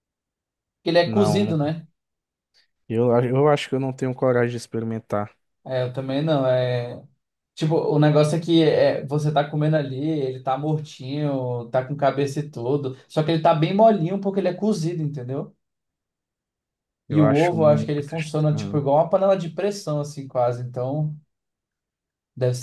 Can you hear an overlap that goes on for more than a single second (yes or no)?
yes